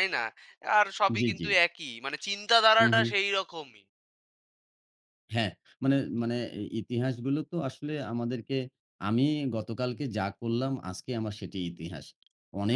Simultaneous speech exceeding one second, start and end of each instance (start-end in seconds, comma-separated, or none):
none